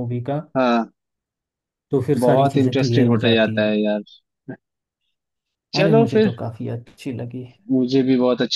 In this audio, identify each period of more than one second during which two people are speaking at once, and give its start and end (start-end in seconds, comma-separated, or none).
2.2-3.7